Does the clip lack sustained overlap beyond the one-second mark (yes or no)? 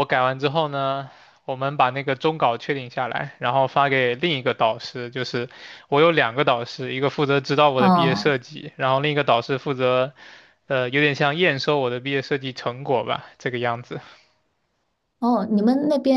yes